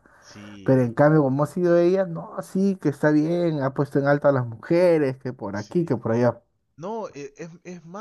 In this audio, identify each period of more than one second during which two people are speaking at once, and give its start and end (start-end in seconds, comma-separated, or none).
none